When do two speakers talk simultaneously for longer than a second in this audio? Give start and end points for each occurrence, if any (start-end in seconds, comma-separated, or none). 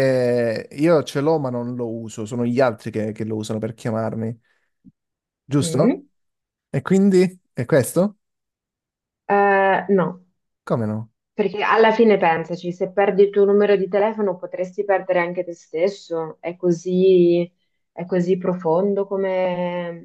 none